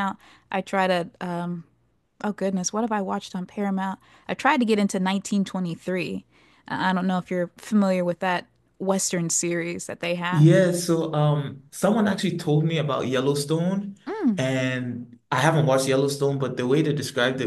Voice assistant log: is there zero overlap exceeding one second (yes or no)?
yes